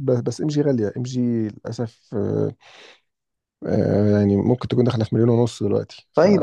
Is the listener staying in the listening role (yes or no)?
no